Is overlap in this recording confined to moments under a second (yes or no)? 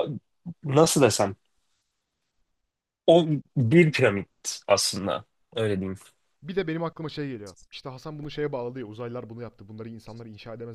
yes